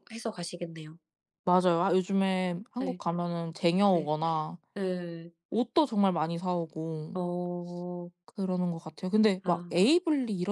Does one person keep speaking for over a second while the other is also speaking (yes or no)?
no